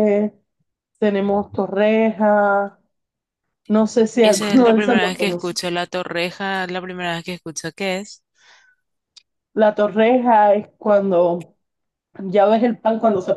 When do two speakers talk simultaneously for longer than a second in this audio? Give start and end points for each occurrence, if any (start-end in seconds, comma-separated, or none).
4.2-5.6